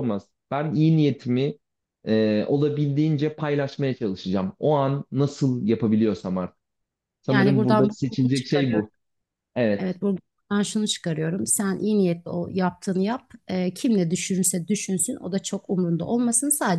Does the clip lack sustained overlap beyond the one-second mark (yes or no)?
no